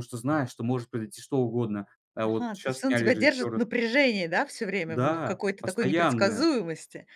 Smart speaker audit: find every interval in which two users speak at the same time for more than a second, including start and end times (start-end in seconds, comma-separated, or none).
2.2-3.6, 4.9-6.4